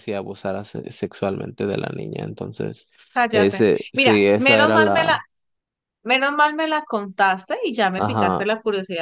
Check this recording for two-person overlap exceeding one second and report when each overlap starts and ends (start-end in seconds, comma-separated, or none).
3.3-5.2